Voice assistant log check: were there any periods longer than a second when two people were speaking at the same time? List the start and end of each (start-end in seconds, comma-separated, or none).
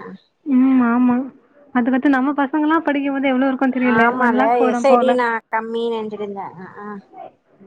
none